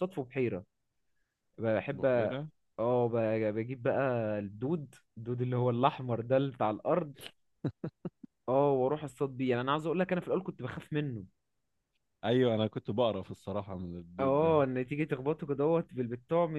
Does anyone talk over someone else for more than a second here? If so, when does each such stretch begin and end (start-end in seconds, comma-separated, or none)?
none